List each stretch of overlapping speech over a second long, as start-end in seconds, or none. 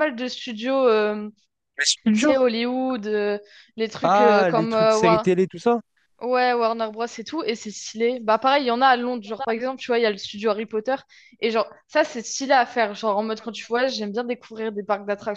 4.0-5.3